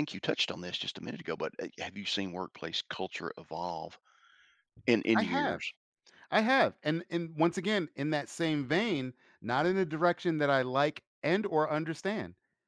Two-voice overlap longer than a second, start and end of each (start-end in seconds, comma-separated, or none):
none